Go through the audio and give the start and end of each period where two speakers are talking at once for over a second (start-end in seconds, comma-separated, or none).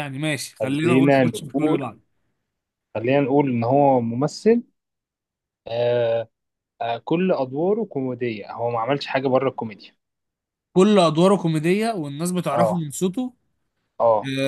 0.6-1.9